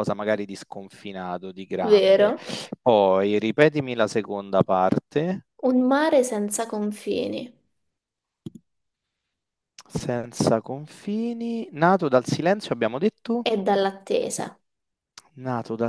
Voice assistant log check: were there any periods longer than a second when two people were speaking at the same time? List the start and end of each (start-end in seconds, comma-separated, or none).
none